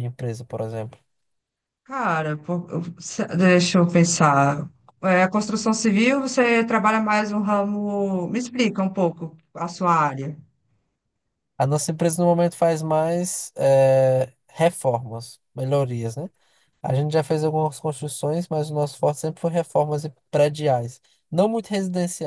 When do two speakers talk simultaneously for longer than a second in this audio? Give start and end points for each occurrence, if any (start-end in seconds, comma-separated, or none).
none